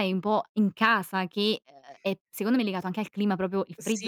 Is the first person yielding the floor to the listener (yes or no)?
yes